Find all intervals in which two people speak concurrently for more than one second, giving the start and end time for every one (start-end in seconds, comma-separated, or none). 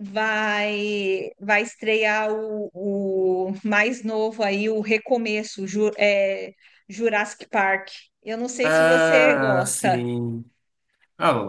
8.6-10.0